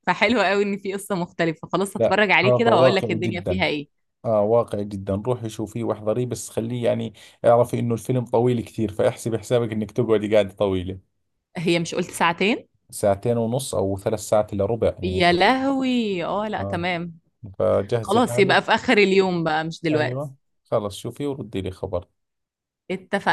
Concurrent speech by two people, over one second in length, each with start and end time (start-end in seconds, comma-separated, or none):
2.0-3.6